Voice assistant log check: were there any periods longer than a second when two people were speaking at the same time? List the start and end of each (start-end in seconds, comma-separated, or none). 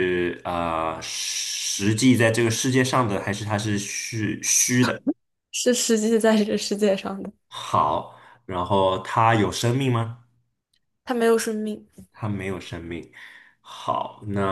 none